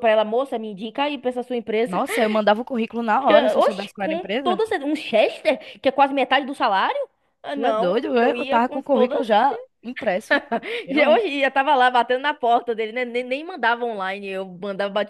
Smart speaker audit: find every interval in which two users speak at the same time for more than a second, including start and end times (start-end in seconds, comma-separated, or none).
3.3-4.6, 7.5-9.2